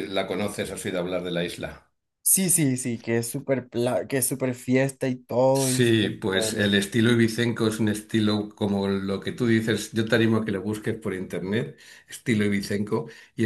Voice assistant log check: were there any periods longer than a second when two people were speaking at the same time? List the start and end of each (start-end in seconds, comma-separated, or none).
5.5-6.8